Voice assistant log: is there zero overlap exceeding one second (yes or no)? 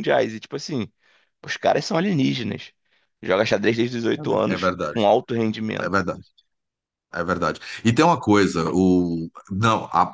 yes